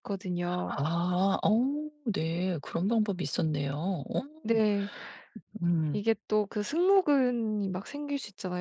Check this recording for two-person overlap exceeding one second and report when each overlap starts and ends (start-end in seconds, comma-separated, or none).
none